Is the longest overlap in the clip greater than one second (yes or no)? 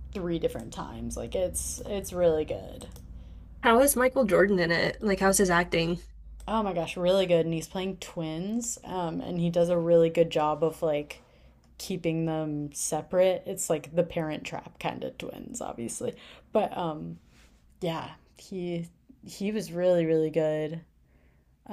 no